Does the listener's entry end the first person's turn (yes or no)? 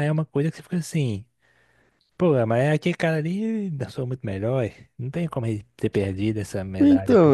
yes